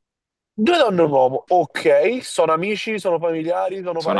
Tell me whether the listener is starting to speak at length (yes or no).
yes